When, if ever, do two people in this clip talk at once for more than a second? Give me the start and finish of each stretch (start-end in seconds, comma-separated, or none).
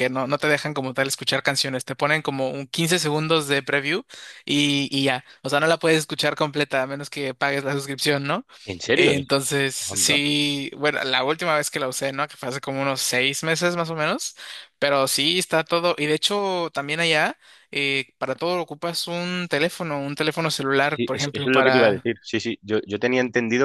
20.8-22.1